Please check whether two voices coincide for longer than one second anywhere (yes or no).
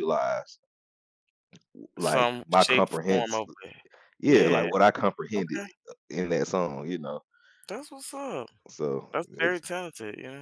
yes